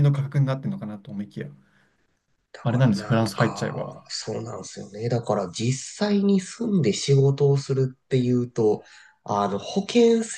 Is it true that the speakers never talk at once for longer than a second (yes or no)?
no